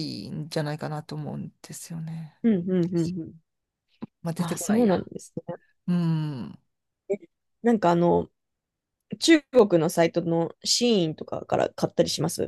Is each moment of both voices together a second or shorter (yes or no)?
yes